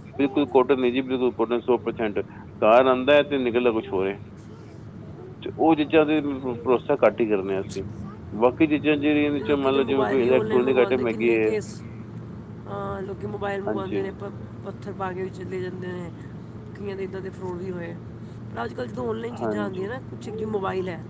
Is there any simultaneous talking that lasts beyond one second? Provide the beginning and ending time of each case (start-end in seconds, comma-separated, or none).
9.5-11.5